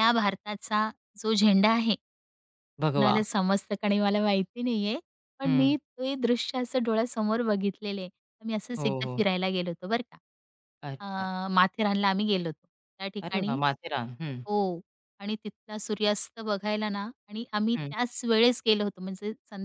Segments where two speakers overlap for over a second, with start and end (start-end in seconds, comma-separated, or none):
none